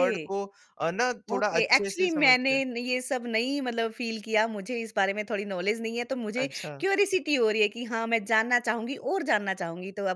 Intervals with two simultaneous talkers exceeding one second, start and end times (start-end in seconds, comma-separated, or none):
1.3-2.6